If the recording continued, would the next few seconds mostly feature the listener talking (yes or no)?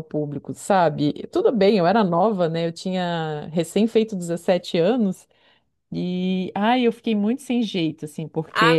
yes